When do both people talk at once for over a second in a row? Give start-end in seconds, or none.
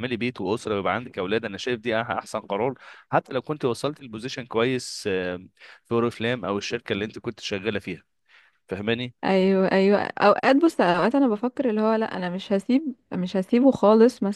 none